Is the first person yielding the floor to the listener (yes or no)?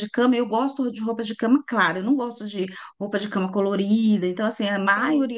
no